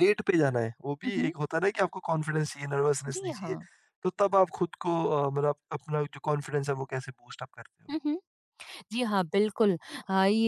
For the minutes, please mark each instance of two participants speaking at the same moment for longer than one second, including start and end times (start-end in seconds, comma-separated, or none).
none